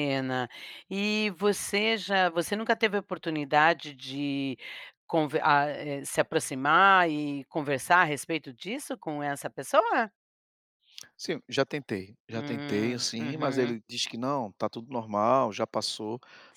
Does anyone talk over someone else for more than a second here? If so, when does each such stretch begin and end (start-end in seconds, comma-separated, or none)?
12.3-13.8